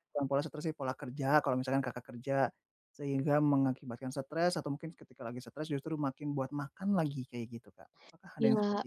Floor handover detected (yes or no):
yes